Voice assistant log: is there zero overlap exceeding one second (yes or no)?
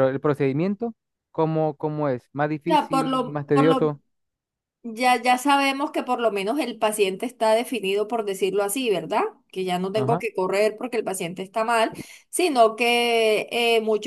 no